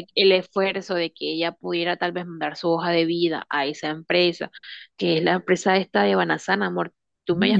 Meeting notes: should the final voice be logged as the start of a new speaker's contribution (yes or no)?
yes